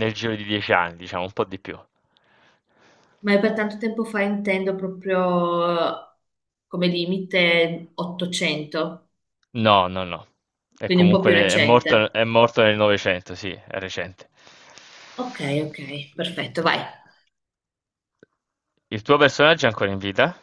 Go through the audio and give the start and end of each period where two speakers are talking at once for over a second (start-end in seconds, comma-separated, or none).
10.8-12.2